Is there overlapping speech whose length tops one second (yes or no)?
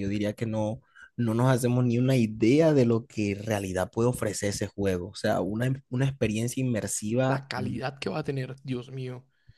no